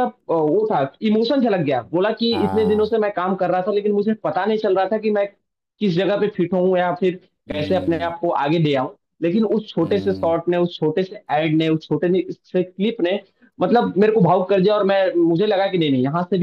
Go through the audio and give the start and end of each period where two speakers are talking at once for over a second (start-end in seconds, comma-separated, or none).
none